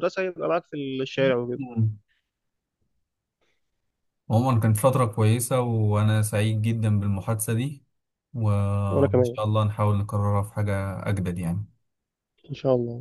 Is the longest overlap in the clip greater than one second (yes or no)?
no